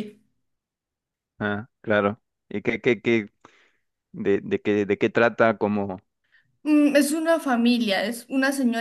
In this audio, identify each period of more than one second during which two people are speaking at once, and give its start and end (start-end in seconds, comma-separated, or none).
none